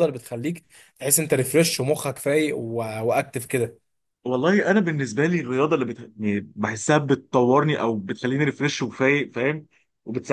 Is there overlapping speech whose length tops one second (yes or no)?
no